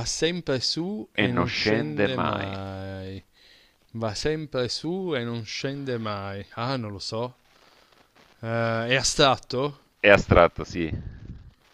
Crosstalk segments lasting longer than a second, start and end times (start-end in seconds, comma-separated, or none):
1.2-2.5